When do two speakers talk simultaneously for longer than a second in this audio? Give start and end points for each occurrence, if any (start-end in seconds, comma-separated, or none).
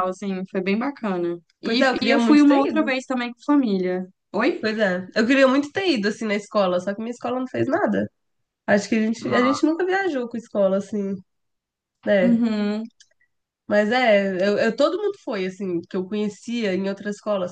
1.6-2.9